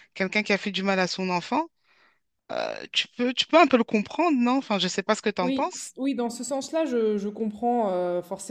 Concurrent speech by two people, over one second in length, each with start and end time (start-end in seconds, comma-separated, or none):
none